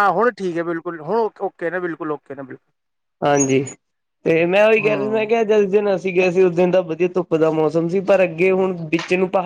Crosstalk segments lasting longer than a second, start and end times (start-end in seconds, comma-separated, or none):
none